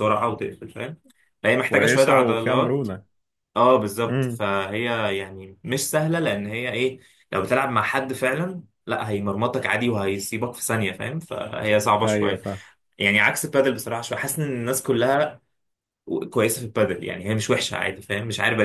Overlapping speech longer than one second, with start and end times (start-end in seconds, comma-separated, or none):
1.6-2.9